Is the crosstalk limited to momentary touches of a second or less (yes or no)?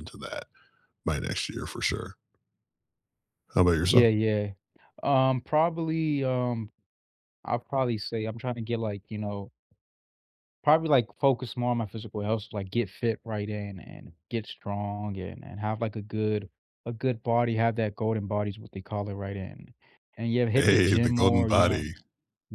no